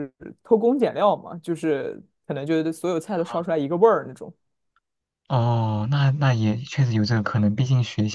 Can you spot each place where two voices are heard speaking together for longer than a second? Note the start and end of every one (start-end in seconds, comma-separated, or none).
none